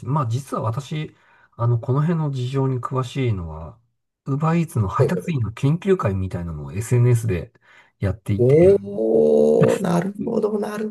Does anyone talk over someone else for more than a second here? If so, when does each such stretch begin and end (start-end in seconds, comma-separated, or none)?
none